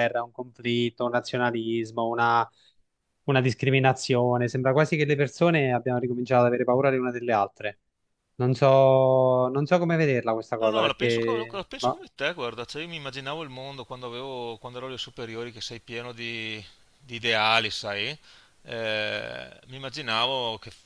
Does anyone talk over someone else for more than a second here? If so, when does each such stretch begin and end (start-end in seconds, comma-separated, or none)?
10.6-12.0